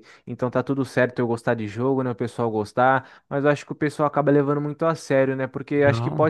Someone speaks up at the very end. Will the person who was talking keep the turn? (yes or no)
yes